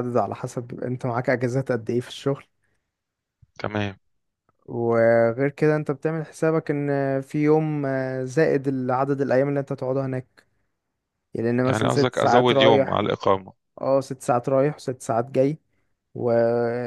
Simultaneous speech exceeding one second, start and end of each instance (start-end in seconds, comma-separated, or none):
11.6-13.1